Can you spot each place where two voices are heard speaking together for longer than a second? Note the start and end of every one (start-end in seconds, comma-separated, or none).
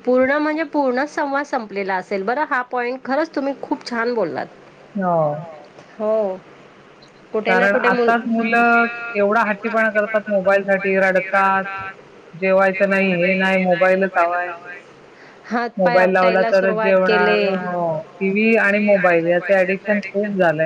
15.8-17.4